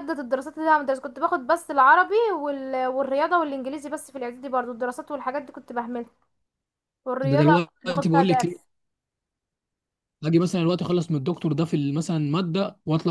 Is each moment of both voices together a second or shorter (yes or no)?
no